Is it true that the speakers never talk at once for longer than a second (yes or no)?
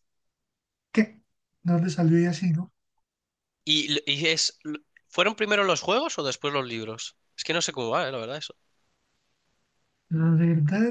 yes